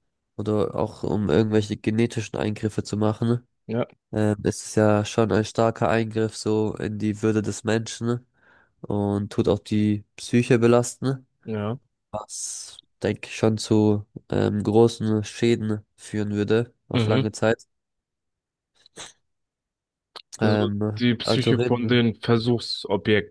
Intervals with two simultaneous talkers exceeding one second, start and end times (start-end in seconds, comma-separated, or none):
20.4-22.0